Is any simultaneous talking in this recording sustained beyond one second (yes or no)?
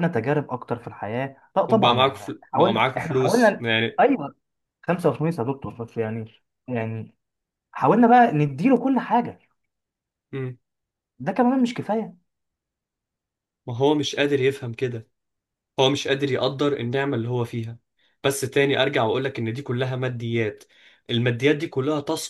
yes